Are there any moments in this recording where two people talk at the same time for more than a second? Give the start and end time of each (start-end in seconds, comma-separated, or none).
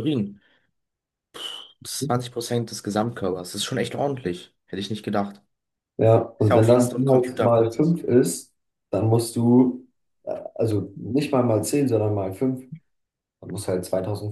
6.4-7.9